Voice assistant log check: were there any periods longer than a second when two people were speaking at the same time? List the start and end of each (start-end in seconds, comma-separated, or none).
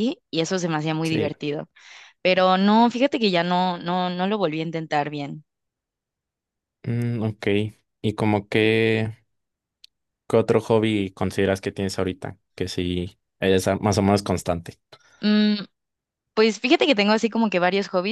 none